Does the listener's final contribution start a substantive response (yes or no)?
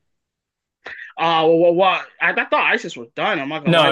yes